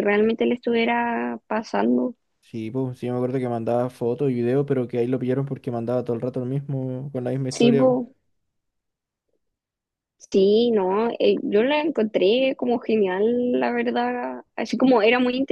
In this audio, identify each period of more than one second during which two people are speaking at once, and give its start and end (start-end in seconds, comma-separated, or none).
none